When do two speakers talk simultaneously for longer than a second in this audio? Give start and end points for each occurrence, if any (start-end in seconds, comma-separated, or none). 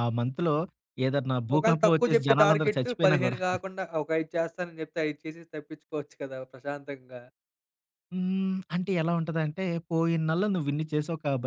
1.6-3.4